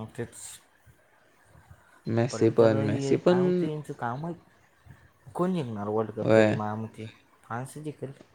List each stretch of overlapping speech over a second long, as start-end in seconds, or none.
2.3-3.7